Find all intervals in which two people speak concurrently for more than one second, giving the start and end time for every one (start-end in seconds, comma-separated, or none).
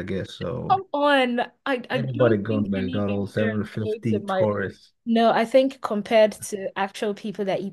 1.9-4.5